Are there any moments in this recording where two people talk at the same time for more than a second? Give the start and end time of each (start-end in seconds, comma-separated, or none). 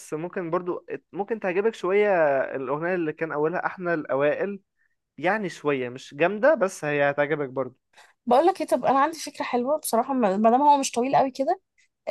none